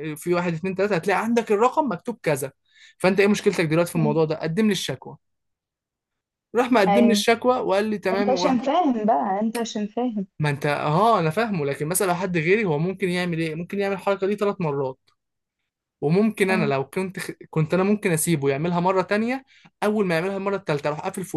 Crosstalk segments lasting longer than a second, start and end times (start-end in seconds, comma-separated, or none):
none